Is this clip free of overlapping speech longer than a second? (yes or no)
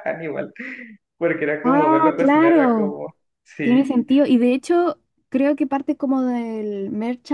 no